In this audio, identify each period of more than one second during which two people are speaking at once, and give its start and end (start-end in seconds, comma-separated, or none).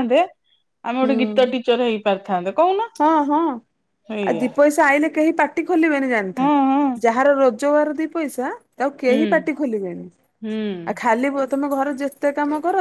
none